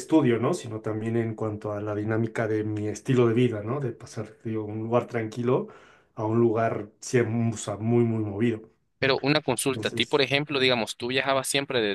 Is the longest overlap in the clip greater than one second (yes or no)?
no